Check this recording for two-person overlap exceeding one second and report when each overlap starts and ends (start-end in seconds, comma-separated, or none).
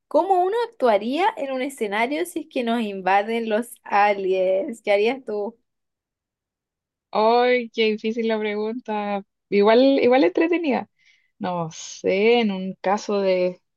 none